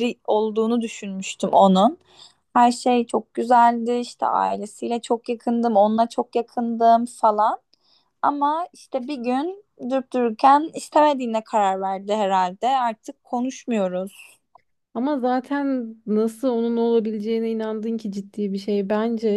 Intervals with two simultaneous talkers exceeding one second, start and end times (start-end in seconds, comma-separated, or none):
none